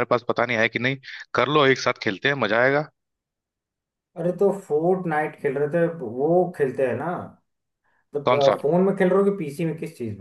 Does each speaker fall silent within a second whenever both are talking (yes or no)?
yes